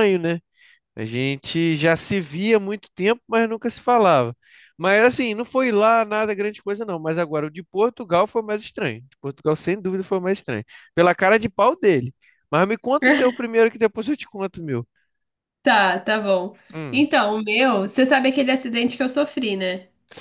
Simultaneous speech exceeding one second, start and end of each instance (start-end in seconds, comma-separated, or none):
none